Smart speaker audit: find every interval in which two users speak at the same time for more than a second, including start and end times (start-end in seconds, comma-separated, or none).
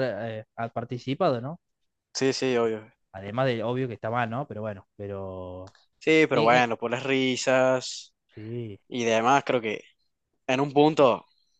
none